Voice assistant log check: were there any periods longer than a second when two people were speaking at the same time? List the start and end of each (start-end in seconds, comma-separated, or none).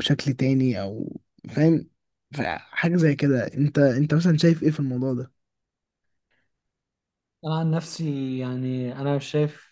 none